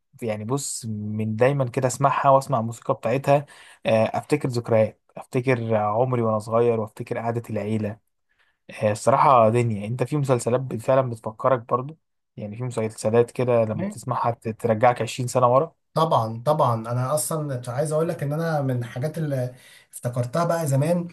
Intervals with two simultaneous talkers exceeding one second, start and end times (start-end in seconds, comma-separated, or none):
none